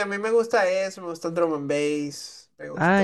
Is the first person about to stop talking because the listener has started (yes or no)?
yes